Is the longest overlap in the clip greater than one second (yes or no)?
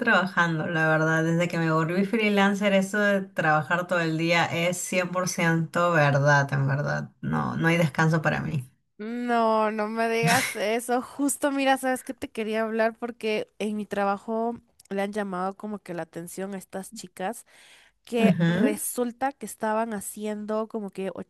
no